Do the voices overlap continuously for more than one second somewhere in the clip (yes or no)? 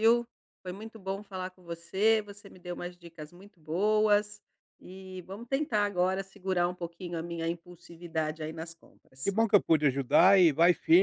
no